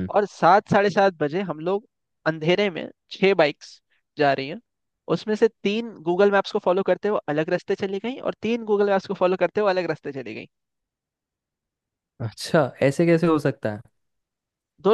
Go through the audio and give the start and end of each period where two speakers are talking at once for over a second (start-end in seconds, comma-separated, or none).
none